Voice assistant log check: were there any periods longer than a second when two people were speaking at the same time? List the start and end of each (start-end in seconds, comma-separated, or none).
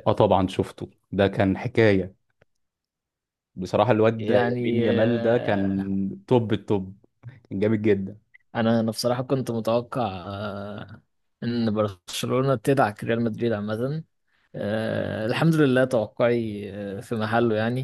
4.2-5.7